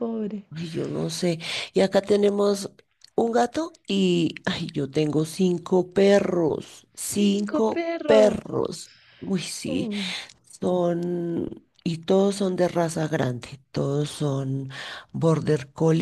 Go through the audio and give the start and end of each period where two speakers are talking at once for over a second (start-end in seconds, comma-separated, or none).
7.2-8.4